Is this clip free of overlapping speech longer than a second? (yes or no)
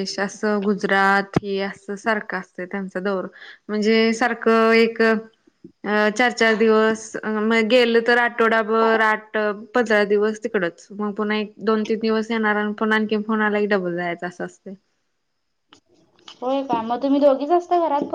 yes